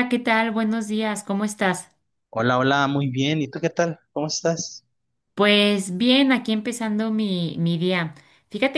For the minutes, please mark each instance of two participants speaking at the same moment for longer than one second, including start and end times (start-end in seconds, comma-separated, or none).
none